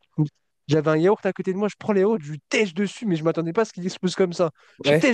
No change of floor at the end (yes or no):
yes